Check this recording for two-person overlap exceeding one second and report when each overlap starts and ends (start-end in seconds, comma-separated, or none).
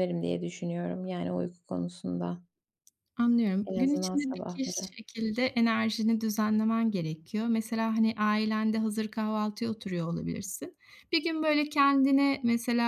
3.6-5.0